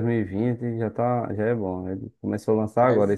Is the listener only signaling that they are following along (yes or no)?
yes